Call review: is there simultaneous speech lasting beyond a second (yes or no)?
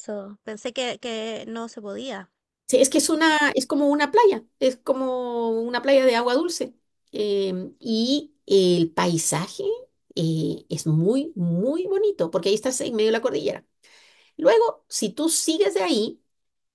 no